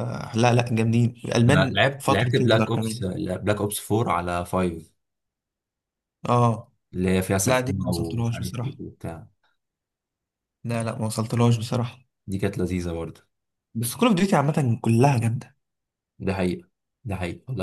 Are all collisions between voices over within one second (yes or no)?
no